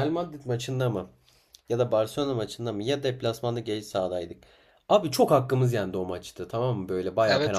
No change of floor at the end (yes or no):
no